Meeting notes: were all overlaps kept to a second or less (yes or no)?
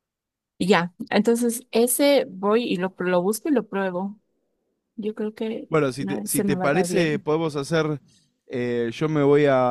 no